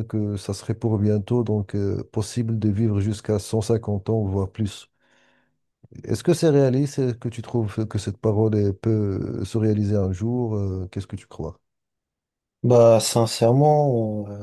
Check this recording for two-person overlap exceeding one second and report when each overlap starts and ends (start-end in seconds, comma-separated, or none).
none